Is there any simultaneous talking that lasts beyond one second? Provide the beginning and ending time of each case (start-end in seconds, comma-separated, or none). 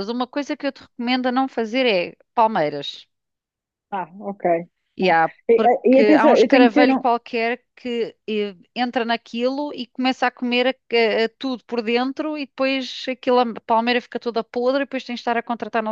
5.0-7.0